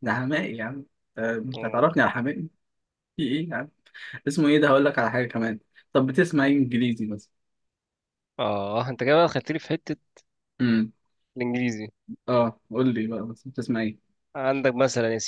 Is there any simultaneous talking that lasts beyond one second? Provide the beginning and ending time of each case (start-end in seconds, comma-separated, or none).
none